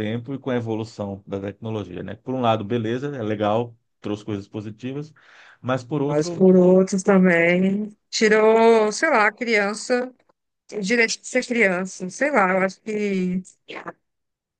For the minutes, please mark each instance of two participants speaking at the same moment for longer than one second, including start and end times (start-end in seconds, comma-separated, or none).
none